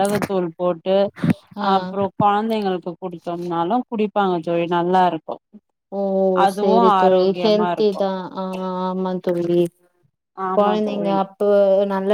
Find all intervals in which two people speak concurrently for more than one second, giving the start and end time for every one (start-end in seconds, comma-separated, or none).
6.5-8.0